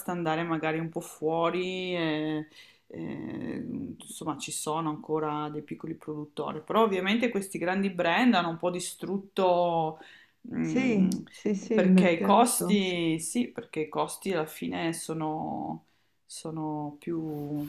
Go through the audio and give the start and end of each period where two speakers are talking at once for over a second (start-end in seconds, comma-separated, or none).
11.7-13.0